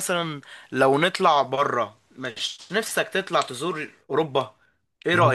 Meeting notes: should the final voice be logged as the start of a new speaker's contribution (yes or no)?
yes